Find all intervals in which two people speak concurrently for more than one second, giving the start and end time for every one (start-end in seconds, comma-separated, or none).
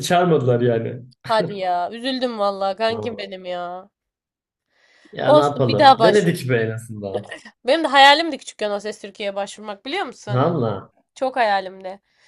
5.2-6.5